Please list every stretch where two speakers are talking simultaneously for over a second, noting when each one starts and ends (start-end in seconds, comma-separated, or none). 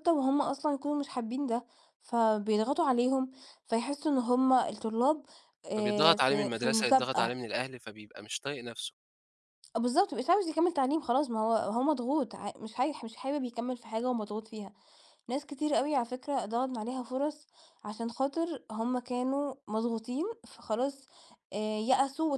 5.8-7.4